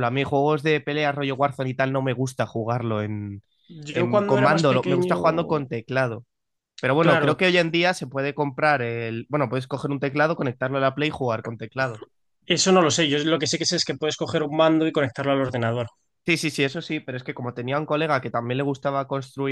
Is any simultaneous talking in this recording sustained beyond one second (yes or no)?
yes